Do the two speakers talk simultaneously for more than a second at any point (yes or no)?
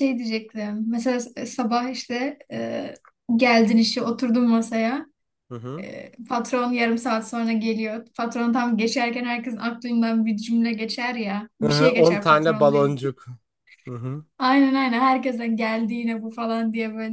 yes